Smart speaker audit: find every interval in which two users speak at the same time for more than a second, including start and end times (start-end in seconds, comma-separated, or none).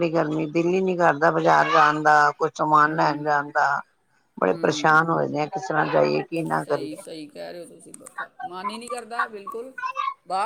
none